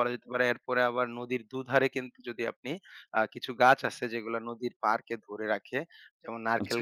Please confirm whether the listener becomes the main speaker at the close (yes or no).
no